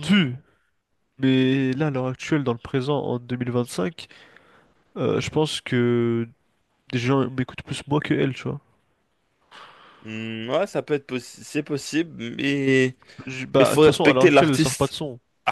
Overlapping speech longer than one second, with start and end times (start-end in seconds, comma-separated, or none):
13.6-14.9